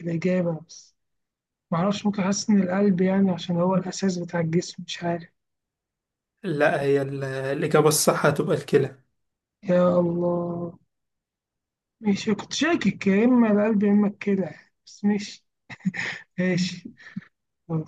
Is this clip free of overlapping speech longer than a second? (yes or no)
yes